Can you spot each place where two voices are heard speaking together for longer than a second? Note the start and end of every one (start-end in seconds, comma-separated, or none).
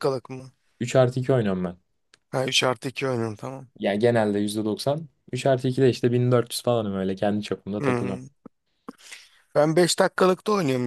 none